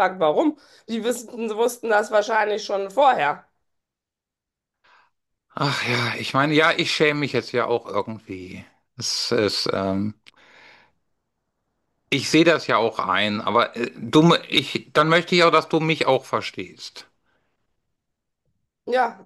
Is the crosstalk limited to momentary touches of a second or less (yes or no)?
yes